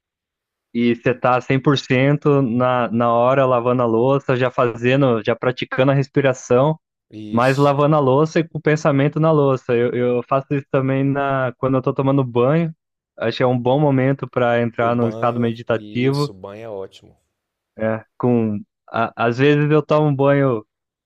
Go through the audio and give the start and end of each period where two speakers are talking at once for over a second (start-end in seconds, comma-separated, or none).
14.8-16.3